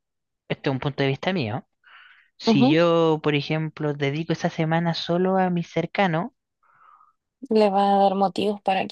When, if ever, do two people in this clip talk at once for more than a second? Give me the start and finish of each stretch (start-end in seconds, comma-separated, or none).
none